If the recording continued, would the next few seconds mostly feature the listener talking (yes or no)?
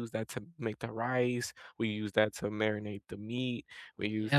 yes